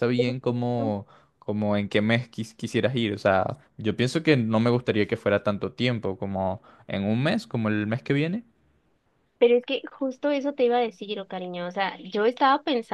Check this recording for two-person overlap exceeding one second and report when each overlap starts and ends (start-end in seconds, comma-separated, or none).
none